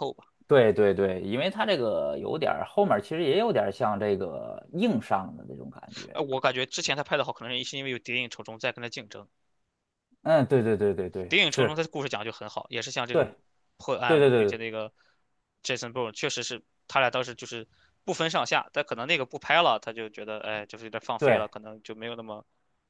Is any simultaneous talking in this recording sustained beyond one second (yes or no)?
no